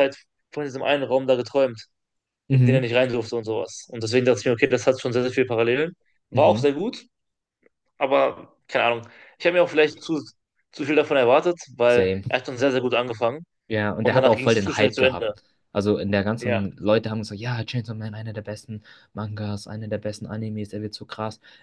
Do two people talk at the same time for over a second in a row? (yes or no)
yes